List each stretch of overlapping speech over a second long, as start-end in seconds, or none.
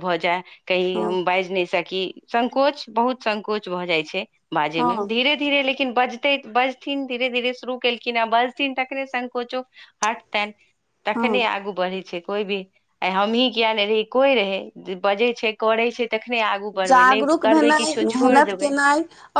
16.9-18.7